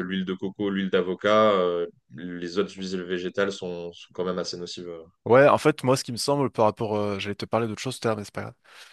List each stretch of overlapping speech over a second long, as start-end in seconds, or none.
none